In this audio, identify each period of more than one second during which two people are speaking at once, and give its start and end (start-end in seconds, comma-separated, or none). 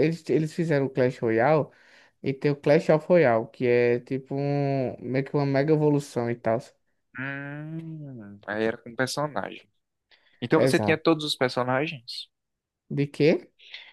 none